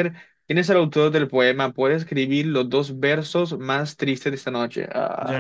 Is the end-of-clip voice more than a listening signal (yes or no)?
yes